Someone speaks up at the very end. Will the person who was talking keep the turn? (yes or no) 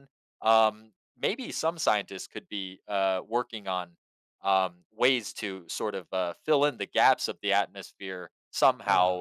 yes